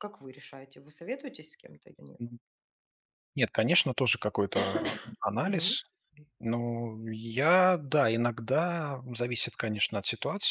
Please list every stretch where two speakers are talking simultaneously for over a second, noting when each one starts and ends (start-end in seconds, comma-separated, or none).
none